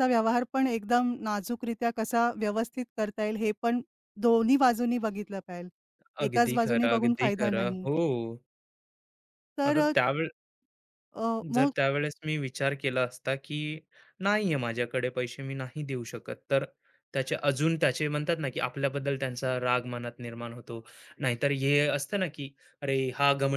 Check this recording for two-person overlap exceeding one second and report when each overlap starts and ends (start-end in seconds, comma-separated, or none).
6.2-7.8